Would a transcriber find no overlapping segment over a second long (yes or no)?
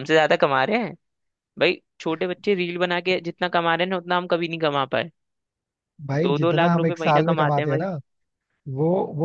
no